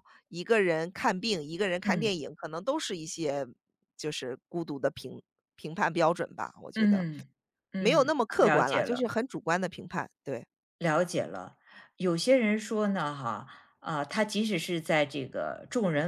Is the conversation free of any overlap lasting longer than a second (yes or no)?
no